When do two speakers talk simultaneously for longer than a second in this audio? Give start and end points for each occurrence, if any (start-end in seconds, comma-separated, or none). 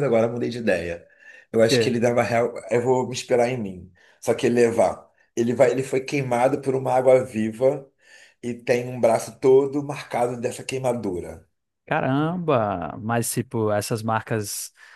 none